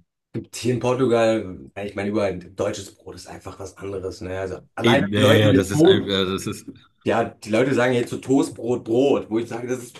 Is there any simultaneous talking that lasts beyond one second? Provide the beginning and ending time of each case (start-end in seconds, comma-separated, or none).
4.8-6.2